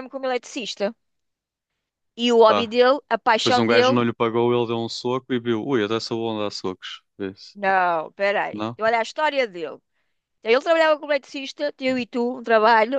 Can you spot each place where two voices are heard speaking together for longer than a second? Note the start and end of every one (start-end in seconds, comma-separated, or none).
none